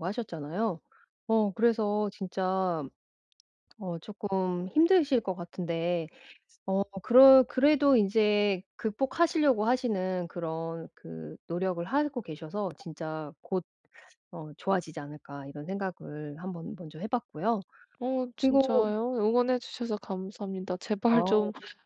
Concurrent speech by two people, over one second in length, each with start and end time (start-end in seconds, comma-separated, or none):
none